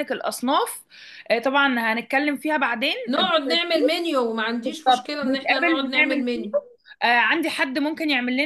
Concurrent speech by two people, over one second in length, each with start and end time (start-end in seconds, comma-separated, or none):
5.2-6.5